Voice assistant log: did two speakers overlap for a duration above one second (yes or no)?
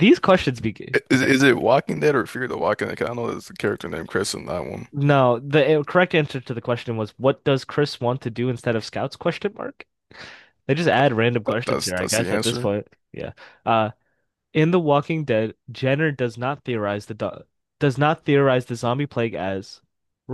yes